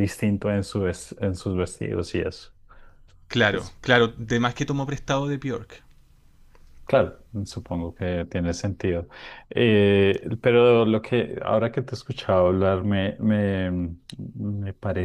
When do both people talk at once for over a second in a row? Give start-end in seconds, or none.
none